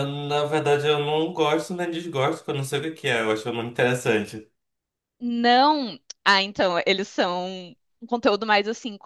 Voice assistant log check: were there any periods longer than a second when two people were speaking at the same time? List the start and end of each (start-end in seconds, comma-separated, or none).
none